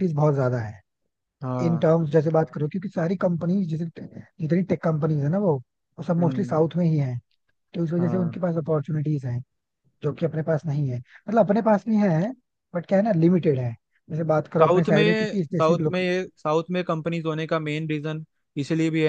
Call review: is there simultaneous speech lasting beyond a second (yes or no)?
yes